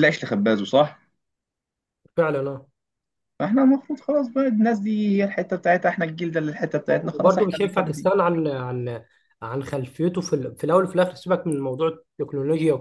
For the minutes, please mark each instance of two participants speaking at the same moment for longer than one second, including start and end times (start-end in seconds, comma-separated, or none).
6.9-8.1